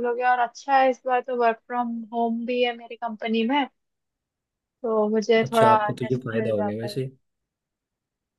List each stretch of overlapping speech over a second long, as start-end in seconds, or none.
5.4-7.0